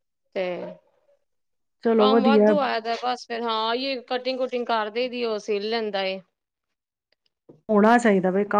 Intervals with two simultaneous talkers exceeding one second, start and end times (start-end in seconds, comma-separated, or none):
none